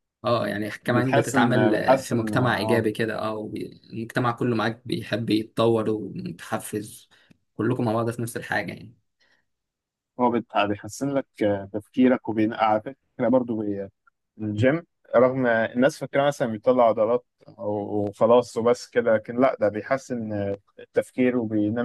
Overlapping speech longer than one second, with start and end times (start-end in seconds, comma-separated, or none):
0.9-2.9